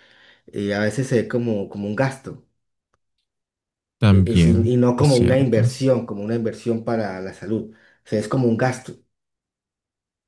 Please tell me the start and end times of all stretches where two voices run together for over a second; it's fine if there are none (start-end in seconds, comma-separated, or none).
4.1-5.8